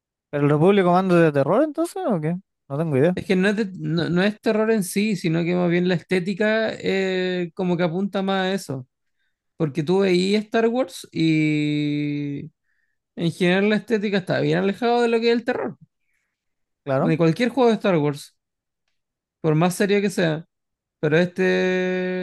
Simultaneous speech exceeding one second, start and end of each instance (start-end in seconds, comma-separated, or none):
none